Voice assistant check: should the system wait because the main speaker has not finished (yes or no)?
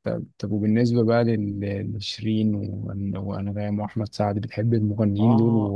no